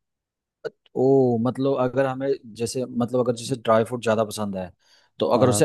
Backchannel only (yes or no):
yes